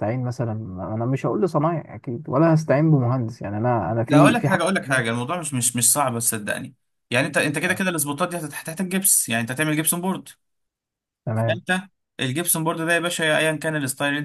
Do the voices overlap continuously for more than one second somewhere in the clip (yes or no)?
no